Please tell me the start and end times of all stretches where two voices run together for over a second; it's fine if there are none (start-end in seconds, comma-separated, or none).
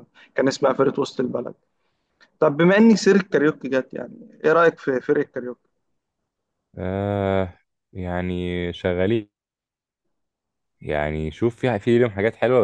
none